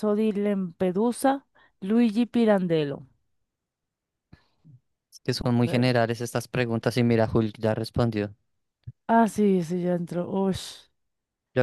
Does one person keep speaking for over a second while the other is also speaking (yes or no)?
no